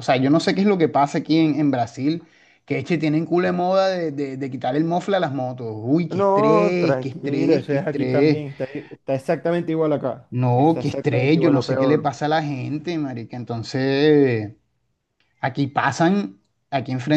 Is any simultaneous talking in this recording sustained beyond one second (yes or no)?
yes